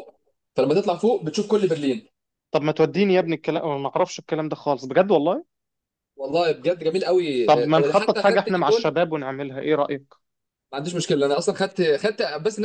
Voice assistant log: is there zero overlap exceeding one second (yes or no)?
no